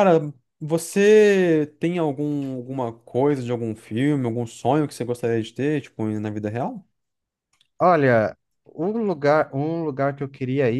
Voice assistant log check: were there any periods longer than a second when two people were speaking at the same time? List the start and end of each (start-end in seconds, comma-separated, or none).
none